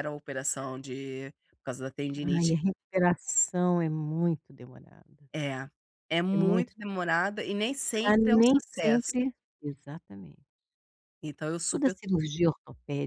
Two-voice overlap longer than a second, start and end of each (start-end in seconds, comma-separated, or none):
7.9-9.1